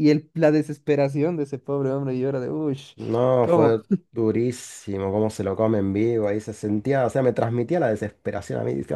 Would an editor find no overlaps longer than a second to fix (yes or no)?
yes